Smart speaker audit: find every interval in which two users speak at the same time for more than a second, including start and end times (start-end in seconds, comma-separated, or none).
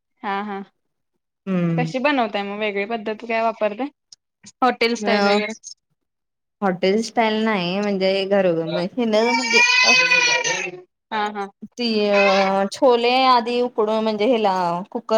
none